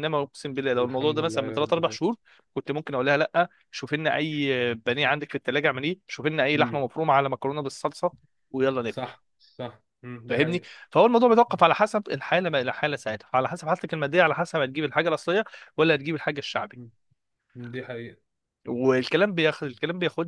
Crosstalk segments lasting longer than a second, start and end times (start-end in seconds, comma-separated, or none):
0.8-2.0